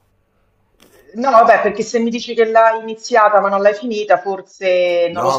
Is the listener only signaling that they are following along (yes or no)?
no